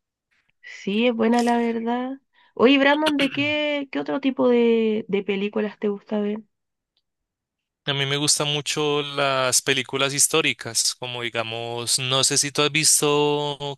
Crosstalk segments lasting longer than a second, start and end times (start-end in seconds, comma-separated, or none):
none